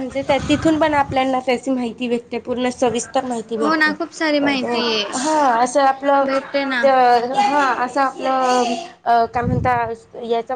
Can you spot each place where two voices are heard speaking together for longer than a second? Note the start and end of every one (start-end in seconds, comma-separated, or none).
none